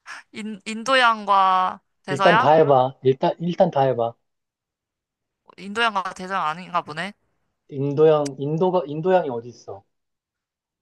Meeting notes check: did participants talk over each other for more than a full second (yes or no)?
no